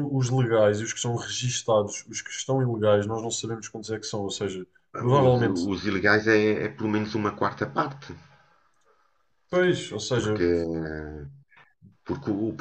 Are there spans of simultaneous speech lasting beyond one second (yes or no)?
no